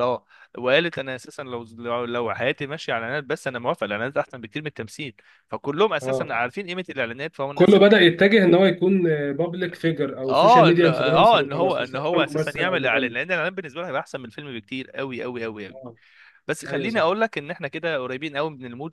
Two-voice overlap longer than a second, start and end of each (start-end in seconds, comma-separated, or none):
10.3-13.2